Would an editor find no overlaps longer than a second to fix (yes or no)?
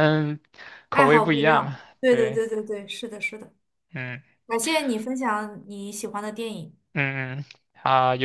no